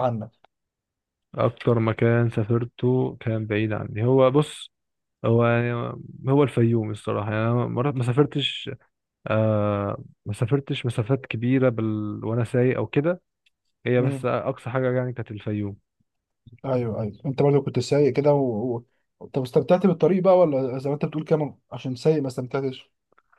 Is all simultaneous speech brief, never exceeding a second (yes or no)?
yes